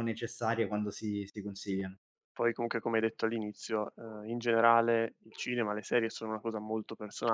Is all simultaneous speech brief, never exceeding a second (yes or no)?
yes